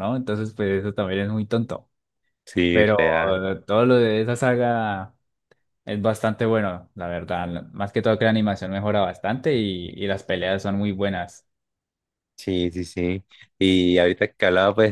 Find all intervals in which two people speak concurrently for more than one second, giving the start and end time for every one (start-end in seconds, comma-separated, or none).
none